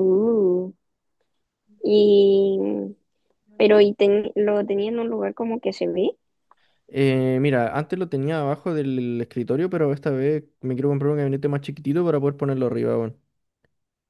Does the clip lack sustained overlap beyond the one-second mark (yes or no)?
yes